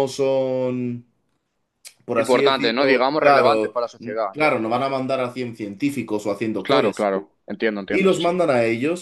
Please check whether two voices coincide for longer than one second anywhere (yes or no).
yes